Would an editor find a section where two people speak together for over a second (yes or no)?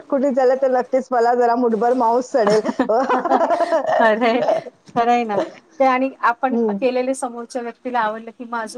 no